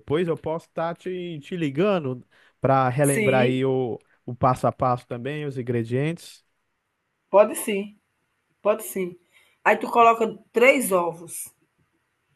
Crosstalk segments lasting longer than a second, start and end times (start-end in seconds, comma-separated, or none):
none